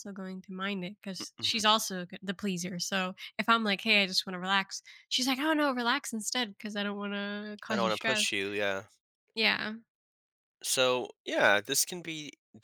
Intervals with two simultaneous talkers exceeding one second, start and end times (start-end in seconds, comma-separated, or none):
none